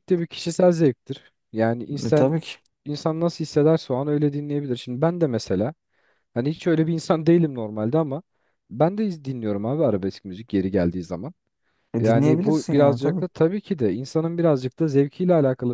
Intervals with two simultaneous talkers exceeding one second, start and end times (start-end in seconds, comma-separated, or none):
12.0-13.3